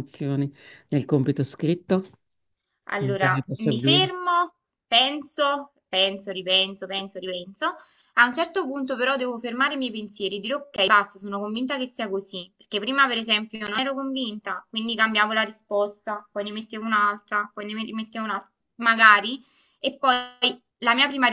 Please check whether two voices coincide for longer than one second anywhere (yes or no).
yes